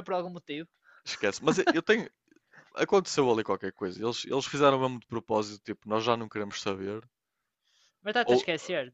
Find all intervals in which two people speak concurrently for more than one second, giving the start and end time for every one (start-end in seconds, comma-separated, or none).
none